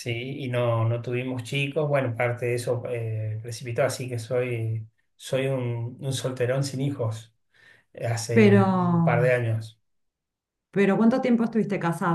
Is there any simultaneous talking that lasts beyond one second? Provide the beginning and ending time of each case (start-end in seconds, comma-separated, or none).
none